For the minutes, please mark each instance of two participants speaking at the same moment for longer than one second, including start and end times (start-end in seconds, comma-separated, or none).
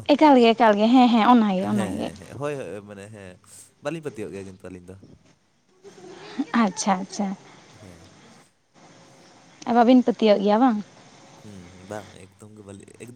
none